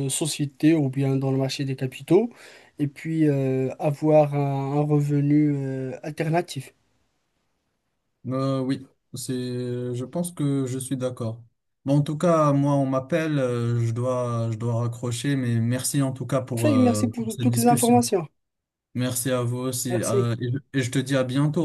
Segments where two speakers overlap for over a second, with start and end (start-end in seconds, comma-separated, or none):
16.5-18.1